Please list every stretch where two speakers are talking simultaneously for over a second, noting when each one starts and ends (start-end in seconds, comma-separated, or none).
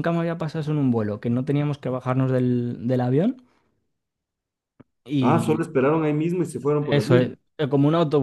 none